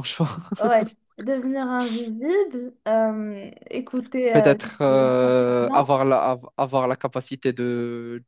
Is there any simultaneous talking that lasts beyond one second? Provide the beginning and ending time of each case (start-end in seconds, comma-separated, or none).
4.3-5.9